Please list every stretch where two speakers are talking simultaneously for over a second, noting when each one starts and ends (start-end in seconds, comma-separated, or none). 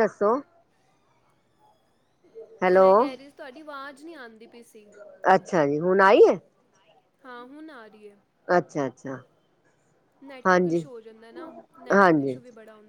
none